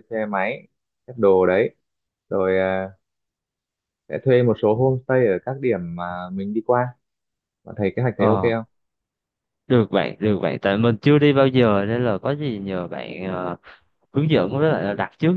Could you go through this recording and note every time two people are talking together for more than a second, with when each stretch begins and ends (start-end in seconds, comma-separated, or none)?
none